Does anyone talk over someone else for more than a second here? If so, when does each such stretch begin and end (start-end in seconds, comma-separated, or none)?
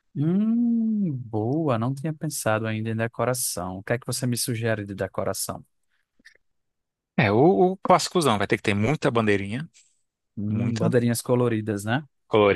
none